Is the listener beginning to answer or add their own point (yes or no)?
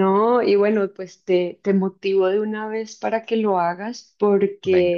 no